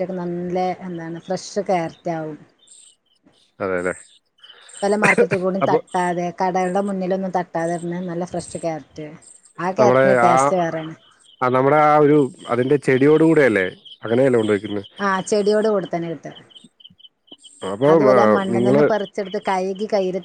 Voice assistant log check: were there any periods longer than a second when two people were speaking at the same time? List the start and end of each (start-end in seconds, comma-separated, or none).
none